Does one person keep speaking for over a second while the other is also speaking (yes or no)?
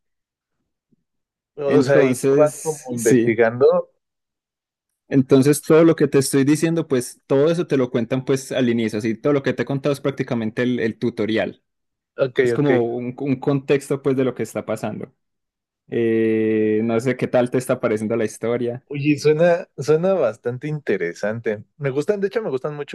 yes